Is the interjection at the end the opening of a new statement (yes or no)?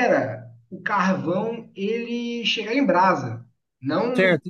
yes